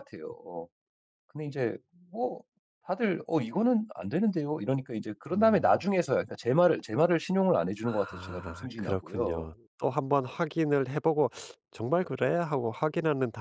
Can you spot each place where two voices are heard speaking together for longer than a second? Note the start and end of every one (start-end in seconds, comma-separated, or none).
8.1-9.5